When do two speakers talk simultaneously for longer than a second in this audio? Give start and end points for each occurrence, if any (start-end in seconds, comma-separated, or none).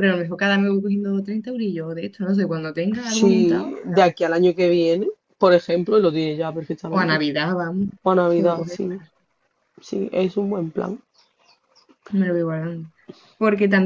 3.0-4.3